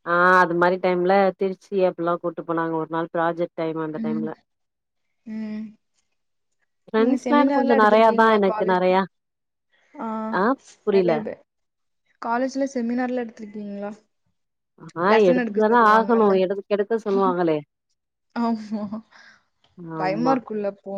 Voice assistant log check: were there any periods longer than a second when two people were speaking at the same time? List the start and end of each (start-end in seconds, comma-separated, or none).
7.0-8.9